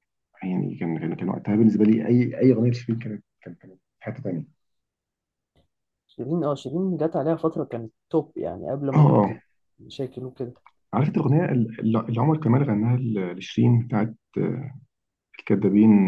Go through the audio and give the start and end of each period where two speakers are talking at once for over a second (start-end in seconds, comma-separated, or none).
none